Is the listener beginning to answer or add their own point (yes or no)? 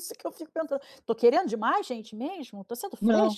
yes